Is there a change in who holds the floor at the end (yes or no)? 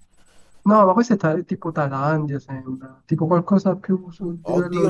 yes